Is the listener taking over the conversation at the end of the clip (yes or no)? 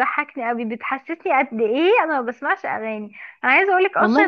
no